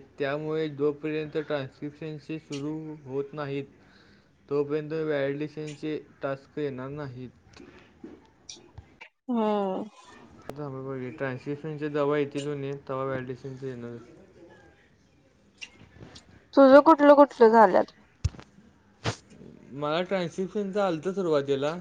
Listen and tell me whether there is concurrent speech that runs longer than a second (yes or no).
no